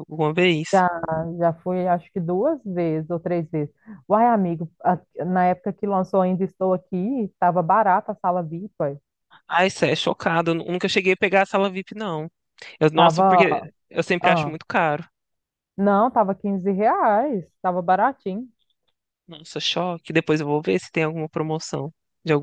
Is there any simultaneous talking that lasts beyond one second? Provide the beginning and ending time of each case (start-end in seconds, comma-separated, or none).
none